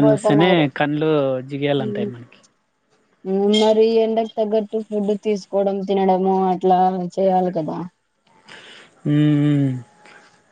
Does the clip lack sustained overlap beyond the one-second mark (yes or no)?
yes